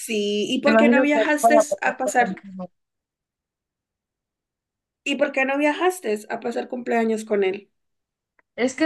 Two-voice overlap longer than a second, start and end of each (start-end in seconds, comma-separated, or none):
0.7-2.3